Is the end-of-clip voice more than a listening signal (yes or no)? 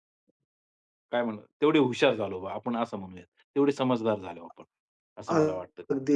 yes